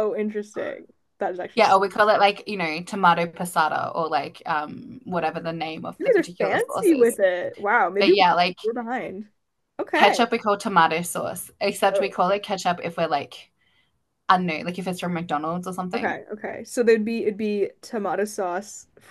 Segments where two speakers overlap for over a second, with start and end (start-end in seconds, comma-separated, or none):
6.0-7.2